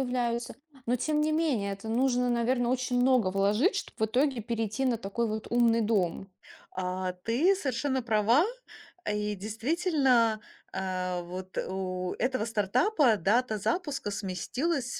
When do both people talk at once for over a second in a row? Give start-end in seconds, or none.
none